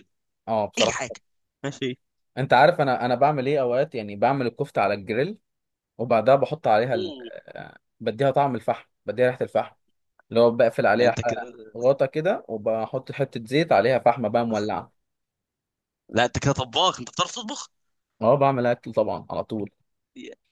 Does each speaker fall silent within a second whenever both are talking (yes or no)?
yes